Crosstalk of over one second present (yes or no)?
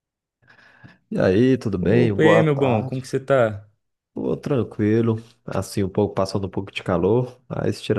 yes